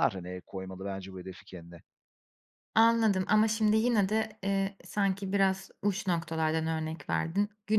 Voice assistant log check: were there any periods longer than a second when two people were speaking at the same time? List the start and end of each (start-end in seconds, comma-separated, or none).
none